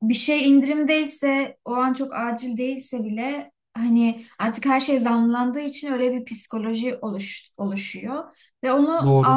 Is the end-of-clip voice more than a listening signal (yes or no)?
no